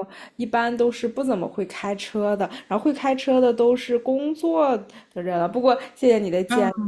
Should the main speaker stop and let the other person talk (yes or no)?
no